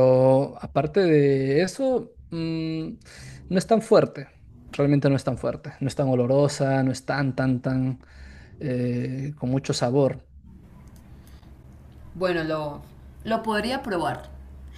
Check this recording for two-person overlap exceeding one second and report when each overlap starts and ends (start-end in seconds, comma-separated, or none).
none